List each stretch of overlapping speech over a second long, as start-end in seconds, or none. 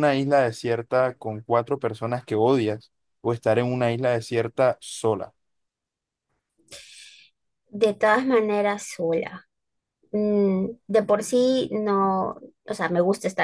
none